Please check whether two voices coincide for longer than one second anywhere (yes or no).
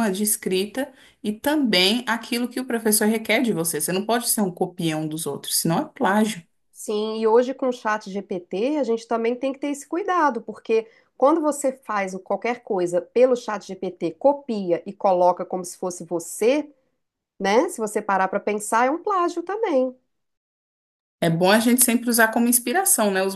no